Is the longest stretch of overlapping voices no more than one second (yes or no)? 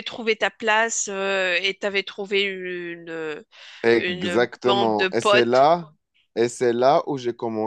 no